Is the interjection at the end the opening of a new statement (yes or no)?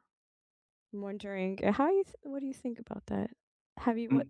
no